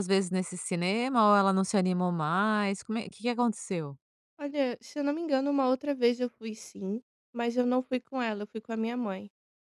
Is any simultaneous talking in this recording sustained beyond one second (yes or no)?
no